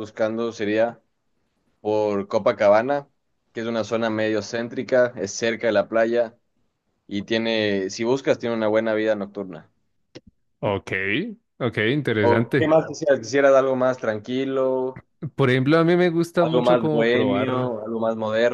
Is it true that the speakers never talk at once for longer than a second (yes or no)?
no